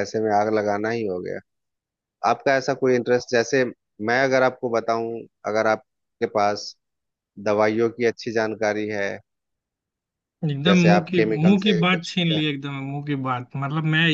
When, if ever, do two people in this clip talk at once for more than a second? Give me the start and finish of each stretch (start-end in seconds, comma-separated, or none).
10.7-12.4